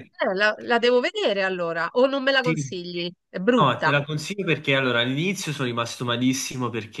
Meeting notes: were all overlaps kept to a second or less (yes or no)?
yes